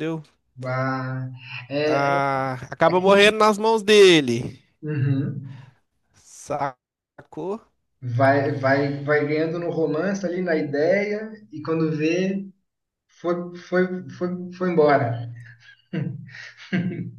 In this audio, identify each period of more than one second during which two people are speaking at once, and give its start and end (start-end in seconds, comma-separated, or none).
none